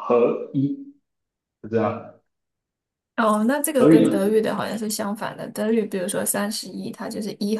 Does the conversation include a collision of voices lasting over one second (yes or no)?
no